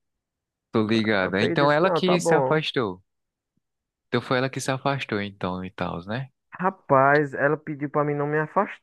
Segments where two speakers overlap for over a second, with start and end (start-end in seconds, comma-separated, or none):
1.2-2.6